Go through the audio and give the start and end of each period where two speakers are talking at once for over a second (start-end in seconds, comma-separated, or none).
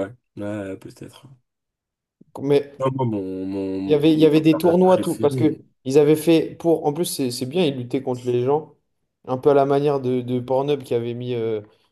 3.9-5.6